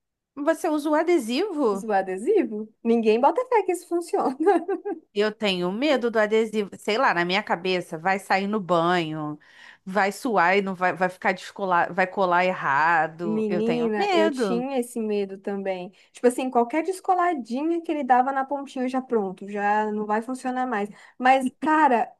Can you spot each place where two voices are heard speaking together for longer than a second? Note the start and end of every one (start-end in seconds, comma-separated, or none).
13.3-14.7